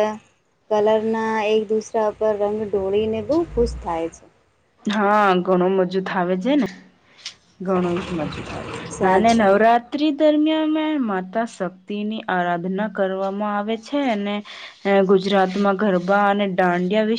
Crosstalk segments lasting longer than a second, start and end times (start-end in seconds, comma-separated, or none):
none